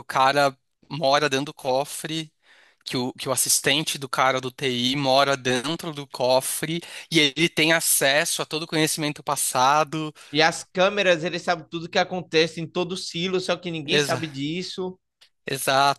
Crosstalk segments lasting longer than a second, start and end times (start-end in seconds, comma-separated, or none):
none